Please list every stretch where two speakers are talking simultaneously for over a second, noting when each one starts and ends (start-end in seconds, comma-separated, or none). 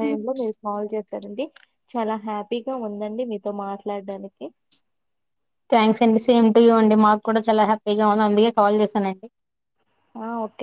none